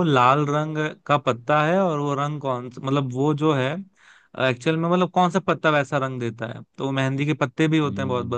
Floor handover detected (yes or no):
no